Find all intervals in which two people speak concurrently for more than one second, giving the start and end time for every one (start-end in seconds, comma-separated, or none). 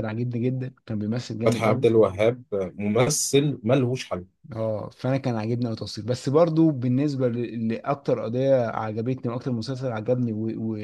none